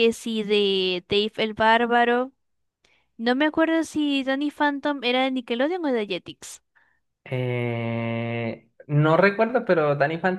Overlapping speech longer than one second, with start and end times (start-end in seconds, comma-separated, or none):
none